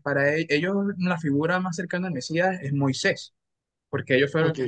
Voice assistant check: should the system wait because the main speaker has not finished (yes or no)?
yes